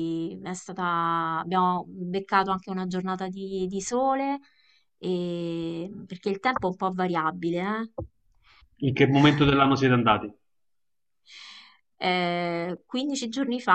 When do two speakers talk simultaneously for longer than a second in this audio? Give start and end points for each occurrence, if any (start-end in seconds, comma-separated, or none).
none